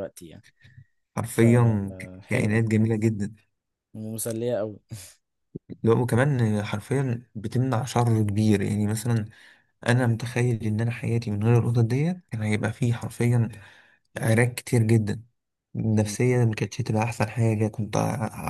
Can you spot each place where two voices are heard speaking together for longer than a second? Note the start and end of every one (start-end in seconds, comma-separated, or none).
1.3-2.6